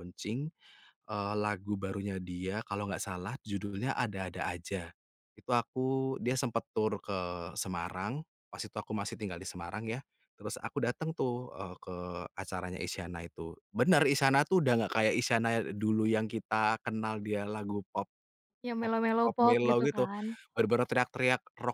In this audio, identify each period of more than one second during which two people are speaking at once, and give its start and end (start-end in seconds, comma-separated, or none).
18.8-20.0